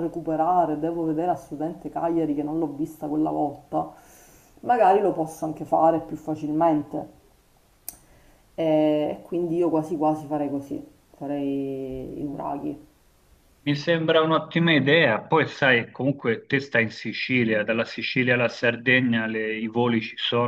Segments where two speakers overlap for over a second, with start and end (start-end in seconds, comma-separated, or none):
none